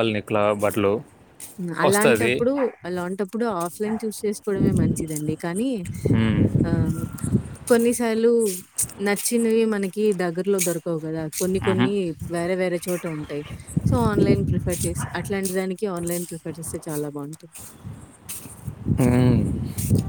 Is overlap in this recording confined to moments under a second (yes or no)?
yes